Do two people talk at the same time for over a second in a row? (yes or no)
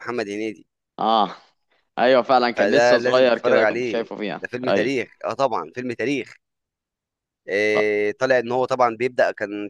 yes